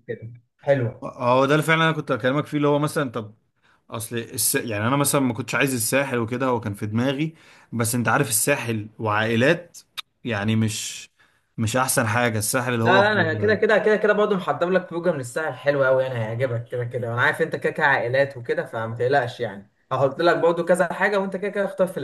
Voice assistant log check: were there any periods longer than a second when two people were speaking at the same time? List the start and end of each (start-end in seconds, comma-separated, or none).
none